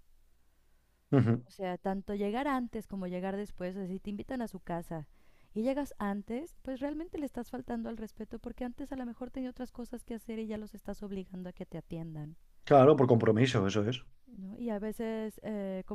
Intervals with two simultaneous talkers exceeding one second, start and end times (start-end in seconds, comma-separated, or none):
none